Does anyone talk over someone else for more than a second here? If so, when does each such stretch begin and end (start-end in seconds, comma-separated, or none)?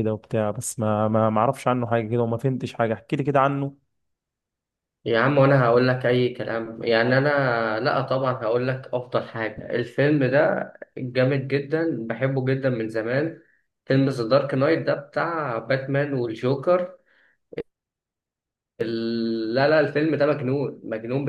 none